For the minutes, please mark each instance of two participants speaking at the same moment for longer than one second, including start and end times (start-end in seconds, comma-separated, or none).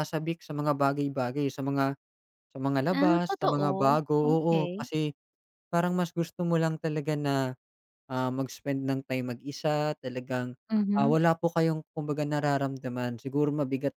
2.9-4.9